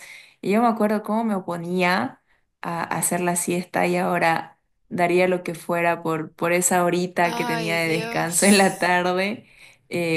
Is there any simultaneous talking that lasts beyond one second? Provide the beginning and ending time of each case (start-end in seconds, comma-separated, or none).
7.2-9.0